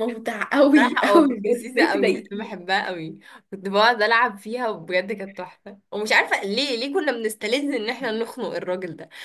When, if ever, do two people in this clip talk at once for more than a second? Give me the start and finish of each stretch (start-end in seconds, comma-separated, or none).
0.8-2.6